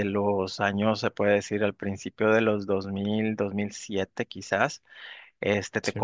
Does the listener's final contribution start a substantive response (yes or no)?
no